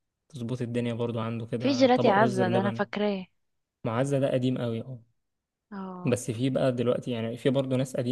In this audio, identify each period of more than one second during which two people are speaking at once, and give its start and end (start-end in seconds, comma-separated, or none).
1.6-2.9